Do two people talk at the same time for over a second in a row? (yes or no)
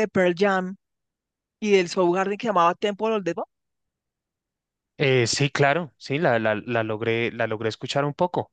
no